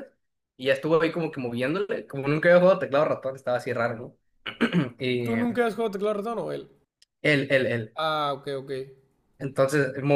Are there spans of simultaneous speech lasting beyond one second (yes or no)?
no